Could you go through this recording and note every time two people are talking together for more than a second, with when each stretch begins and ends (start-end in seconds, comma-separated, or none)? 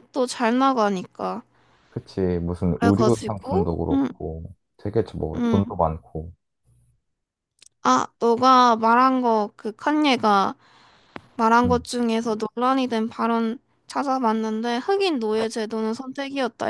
2.7-4.1